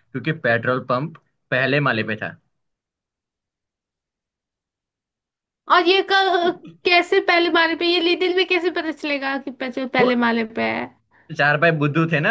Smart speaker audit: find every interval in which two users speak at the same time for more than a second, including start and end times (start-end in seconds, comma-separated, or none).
none